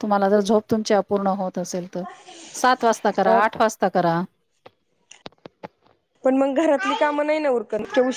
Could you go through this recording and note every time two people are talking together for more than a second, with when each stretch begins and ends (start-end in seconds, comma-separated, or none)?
none